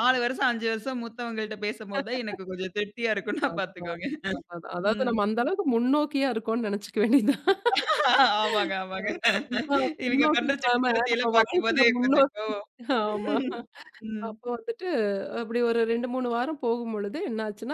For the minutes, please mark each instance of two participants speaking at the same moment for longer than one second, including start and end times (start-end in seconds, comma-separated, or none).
10.1-12.5